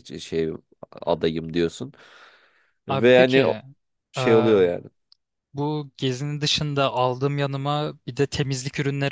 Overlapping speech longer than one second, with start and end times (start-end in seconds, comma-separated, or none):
none